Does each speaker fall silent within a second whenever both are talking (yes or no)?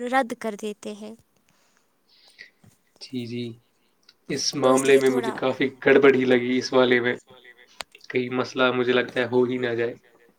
no